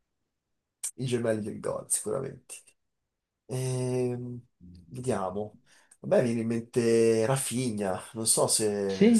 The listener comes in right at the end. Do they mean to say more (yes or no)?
yes